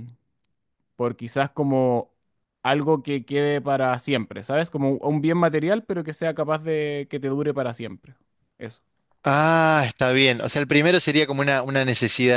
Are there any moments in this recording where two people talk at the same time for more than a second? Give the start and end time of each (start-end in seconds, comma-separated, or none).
none